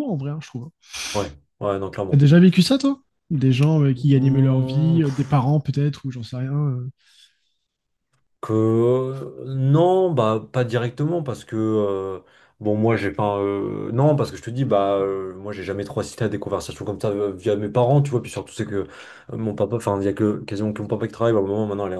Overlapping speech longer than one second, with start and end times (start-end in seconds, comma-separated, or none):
4.2-5.5